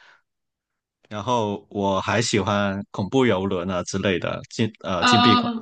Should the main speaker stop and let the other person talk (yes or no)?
no